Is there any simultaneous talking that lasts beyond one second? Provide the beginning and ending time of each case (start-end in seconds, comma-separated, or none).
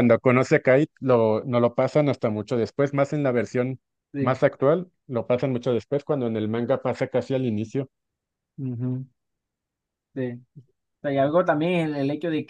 none